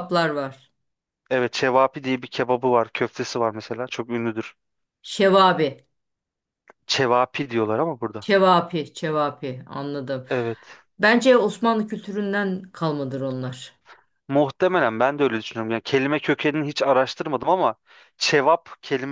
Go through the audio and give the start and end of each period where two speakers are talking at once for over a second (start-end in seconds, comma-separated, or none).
none